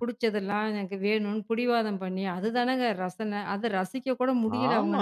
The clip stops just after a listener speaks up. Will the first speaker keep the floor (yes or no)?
no